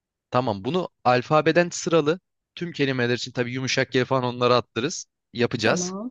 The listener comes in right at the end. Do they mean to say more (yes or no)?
no